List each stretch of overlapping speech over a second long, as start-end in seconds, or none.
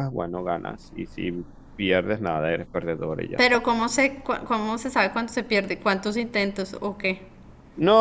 none